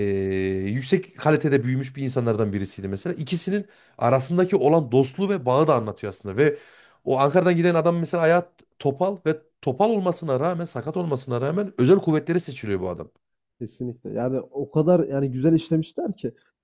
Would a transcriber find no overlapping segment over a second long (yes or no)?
yes